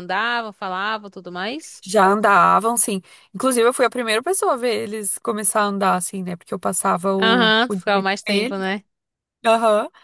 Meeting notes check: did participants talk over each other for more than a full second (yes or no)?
yes